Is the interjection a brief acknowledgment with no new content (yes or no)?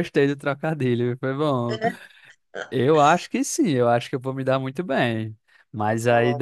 yes